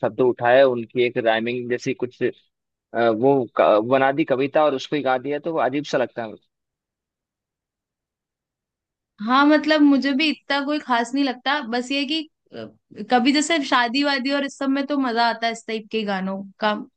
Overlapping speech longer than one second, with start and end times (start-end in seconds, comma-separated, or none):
none